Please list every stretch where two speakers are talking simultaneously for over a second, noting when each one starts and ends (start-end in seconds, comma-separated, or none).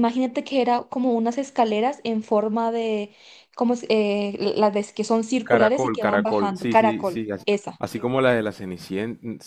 5.4-7.8